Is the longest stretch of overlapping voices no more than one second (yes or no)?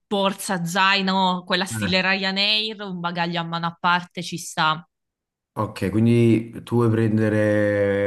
yes